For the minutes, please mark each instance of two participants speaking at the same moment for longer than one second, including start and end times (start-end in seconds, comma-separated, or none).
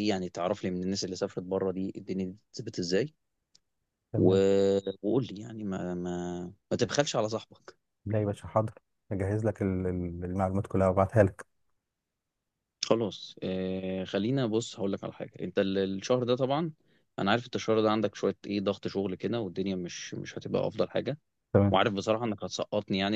none